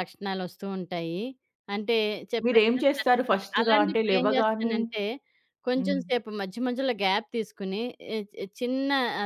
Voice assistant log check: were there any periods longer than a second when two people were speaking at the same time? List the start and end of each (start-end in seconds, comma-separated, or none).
2.5-4.8